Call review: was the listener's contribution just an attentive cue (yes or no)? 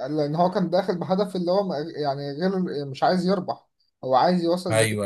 yes